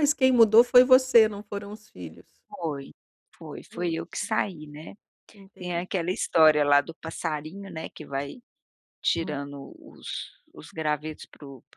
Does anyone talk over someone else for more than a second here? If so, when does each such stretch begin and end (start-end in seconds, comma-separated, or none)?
none